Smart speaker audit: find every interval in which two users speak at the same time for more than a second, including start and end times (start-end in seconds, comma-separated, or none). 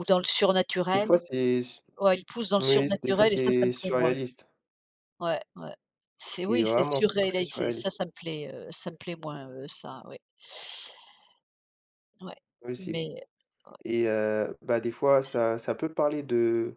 2.6-4.1, 6.3-7.9